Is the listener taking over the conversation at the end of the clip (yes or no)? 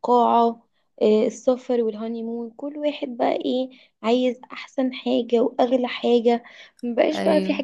no